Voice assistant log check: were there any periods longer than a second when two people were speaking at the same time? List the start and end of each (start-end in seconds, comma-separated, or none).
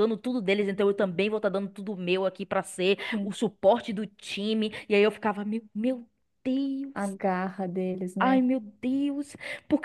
none